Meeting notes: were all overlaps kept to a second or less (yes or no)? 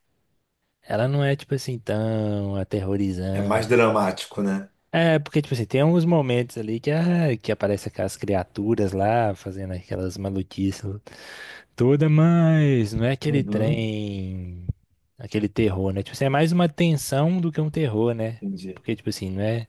yes